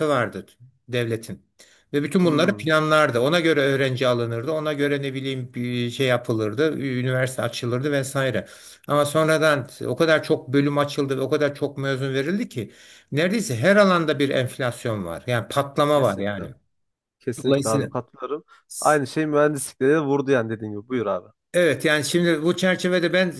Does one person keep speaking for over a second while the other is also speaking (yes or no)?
no